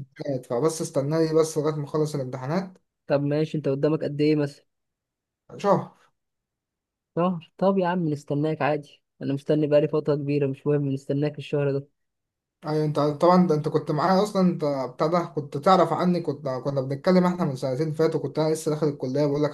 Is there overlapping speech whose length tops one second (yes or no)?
no